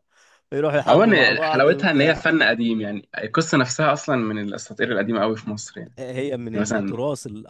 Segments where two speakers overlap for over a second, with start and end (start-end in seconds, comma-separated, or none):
0.9-2.2